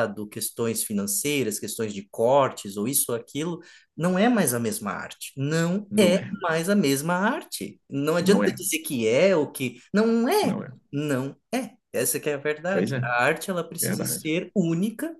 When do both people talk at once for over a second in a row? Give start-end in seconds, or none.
none